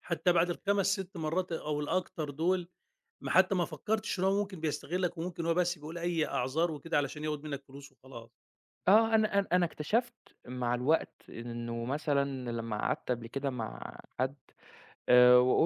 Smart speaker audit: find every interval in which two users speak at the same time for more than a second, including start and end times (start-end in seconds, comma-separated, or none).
none